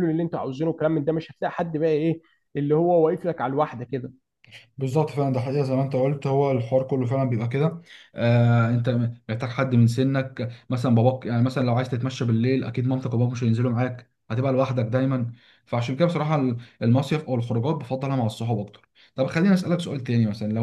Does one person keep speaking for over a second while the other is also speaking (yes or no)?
no